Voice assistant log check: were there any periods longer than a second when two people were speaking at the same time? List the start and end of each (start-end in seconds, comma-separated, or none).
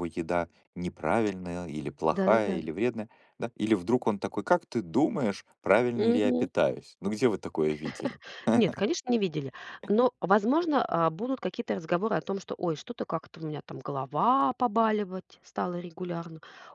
none